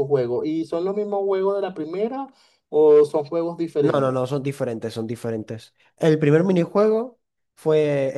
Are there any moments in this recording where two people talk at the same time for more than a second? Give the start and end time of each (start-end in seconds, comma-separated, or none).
none